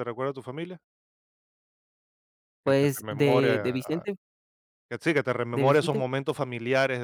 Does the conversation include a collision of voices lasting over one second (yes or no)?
yes